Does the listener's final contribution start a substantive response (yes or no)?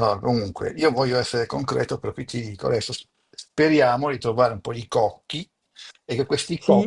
no